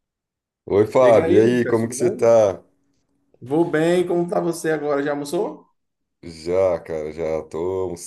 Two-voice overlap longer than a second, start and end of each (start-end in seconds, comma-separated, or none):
1.0-2.3